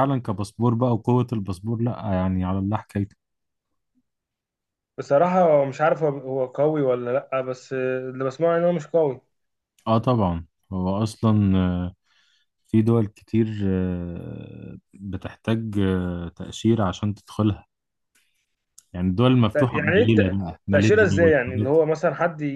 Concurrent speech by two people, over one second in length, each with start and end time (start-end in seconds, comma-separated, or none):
19.7-21.8